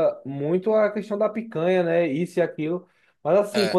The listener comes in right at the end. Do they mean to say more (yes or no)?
no